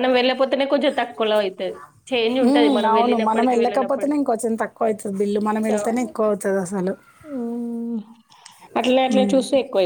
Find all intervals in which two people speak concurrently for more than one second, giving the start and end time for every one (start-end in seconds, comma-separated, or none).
2.5-4.2